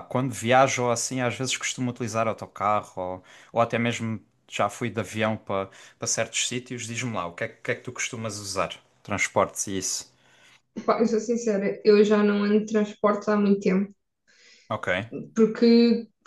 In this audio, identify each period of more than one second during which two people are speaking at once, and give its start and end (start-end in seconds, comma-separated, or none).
none